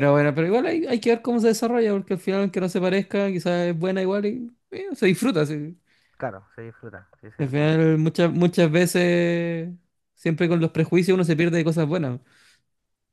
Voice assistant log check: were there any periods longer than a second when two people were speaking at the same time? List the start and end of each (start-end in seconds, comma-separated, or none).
none